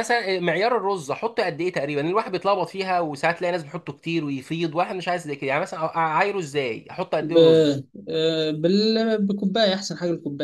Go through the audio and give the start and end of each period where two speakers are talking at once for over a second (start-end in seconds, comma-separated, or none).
none